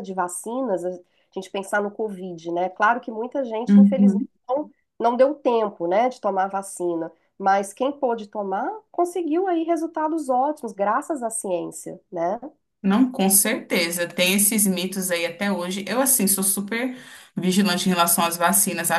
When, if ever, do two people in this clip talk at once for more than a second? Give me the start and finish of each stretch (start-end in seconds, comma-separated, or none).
none